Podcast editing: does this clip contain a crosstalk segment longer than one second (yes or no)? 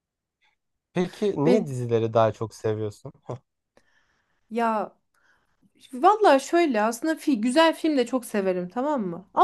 no